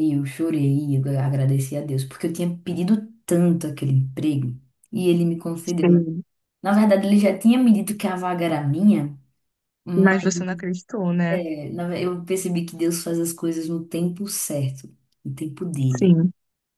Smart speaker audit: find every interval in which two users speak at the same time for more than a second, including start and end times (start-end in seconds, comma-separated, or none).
none